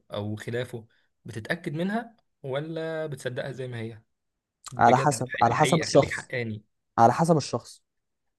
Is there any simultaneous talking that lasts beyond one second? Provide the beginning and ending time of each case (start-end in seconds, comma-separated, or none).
4.8-6.3